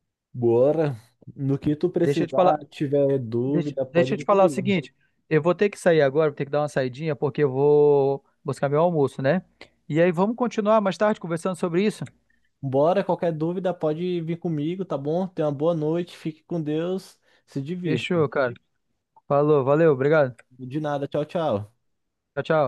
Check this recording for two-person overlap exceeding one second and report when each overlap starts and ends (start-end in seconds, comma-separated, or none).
3.4-4.8